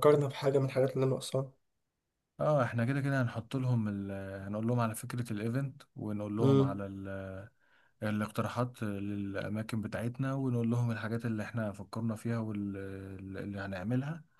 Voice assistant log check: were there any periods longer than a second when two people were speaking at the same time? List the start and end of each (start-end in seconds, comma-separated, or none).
none